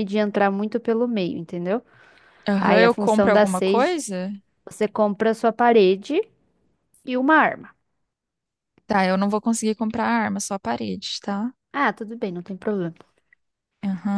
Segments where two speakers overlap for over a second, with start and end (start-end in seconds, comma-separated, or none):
2.6-4.0